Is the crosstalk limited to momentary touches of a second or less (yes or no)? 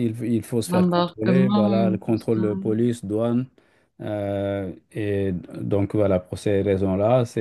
no